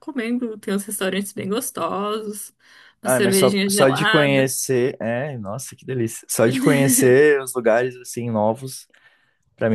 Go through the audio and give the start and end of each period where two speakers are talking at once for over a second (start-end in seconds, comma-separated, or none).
3.0-4.5